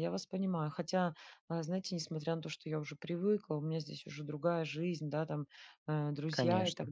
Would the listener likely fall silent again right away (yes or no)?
yes